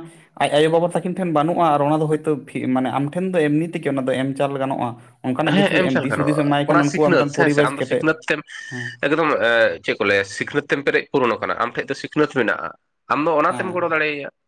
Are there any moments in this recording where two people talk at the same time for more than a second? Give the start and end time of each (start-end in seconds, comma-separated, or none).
5.5-8.0